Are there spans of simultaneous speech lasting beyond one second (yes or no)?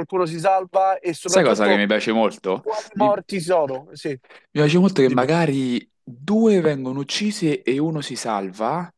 no